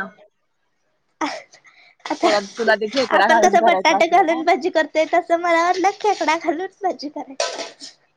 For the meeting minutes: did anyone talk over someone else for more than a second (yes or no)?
yes